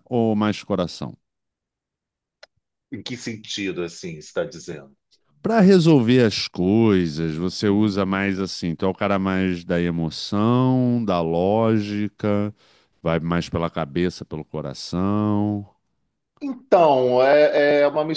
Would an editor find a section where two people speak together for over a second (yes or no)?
no